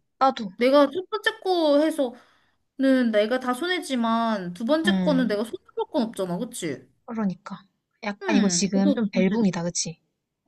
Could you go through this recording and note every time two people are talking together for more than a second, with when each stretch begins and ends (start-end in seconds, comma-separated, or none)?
8.2-9.7